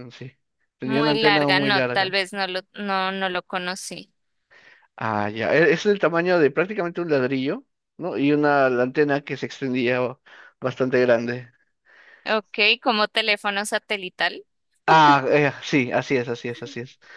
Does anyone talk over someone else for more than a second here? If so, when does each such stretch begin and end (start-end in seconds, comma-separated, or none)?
0.8-2.2